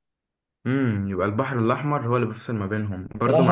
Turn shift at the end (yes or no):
yes